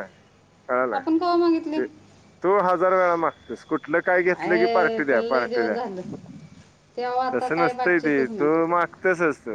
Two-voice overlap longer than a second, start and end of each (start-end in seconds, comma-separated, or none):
4.4-5.7, 7.3-8.7